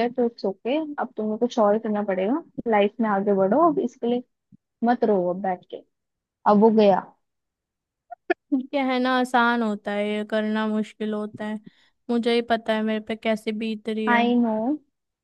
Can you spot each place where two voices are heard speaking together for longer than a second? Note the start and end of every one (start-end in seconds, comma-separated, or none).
none